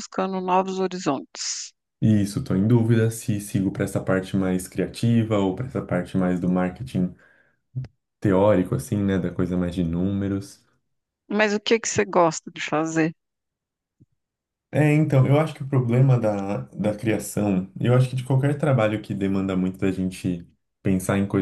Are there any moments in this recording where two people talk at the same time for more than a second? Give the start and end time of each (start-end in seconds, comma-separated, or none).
none